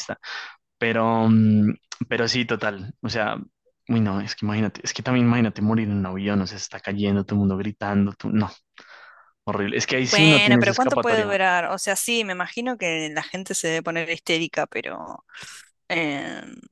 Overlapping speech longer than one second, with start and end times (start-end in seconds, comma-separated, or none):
10.0-11.3